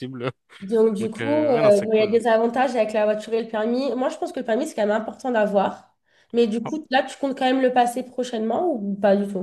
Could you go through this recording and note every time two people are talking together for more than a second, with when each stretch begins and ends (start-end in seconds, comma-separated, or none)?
1.0-2.2